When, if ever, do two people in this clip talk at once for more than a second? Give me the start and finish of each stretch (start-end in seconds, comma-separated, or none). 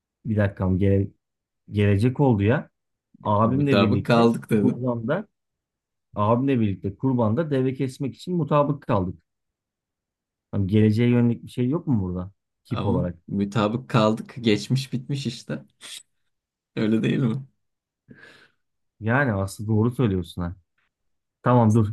3.4-4.9